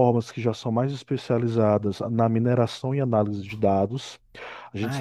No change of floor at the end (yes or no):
yes